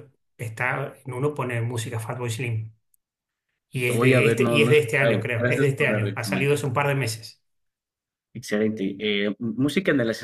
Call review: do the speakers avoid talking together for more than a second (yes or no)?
no